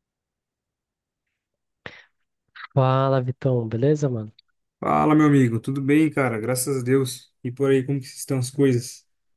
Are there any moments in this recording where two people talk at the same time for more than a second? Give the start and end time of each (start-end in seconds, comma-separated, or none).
none